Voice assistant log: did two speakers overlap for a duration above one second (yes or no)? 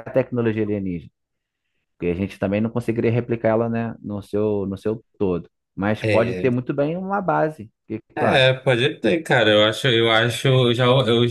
no